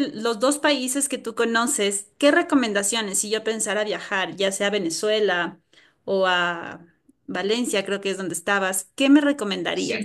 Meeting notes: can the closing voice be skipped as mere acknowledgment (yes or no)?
yes